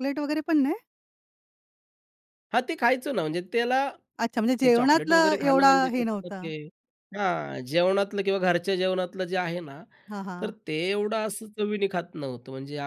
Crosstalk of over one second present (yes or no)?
yes